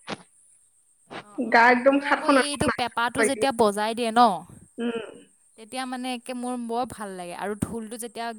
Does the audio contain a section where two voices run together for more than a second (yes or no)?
yes